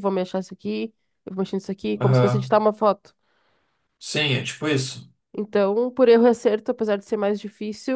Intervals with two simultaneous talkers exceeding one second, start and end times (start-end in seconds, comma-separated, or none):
none